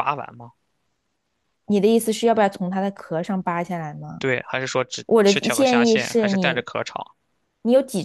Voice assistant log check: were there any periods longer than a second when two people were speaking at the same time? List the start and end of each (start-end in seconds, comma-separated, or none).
5.1-6.6